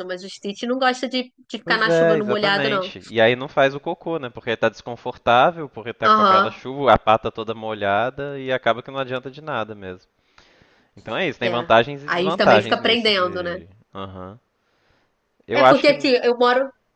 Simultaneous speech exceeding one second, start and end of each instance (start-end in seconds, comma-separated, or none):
1.6-2.9, 11.4-13.6